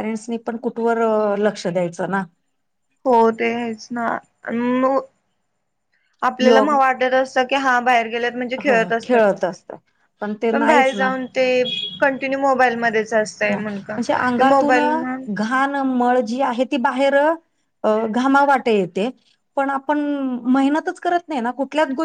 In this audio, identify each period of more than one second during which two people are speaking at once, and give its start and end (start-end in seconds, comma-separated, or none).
none